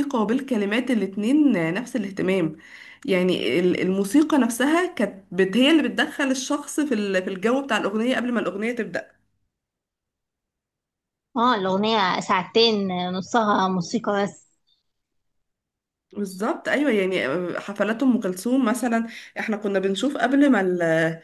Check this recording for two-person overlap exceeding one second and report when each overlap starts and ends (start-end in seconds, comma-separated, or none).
none